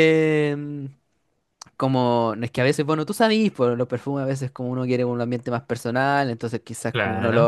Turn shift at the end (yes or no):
no